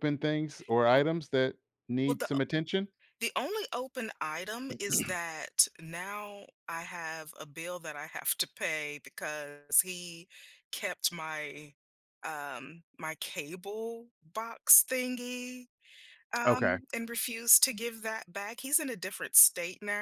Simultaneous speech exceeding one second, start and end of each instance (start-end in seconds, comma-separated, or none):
none